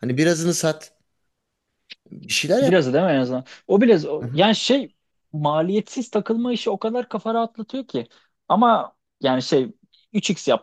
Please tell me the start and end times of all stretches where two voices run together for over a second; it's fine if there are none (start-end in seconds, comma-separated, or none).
none